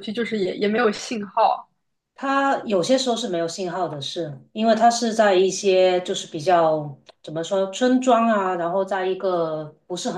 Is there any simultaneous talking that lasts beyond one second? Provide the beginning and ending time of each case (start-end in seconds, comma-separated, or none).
none